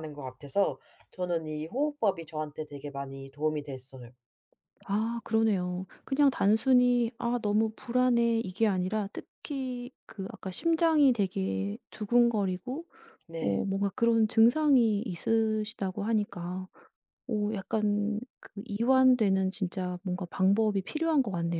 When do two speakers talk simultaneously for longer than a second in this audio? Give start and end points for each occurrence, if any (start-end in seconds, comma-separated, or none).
none